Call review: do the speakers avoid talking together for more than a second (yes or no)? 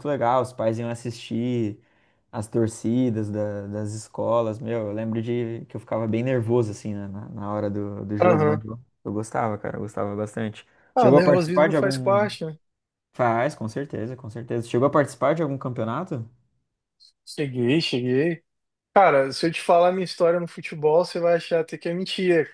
no